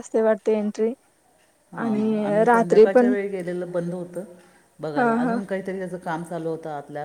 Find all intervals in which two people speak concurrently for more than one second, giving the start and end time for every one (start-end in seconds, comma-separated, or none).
1.8-3.1